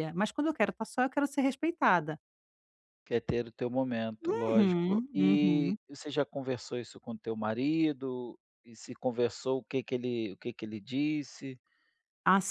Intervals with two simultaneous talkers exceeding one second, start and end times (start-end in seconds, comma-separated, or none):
4.5-5.8